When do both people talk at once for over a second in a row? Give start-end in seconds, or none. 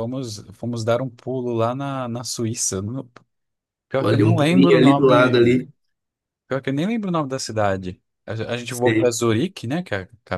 4.0-5.6